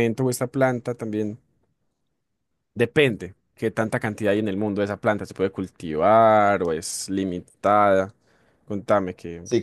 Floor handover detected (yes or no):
yes